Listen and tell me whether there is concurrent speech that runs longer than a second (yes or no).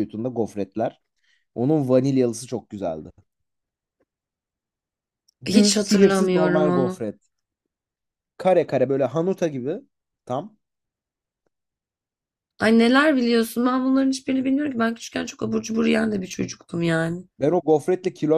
yes